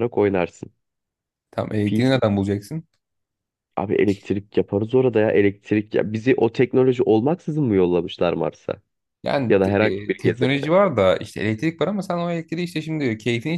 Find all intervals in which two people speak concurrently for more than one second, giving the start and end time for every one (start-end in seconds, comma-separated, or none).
9.5-10.7